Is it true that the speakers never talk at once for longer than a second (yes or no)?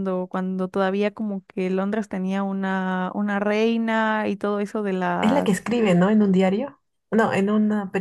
yes